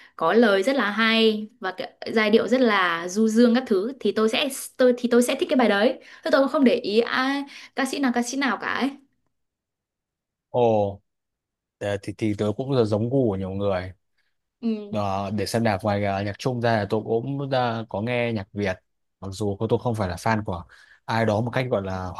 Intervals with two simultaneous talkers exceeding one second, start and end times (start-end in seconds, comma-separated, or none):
none